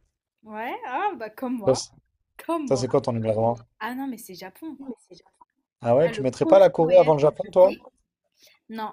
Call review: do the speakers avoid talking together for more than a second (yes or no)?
no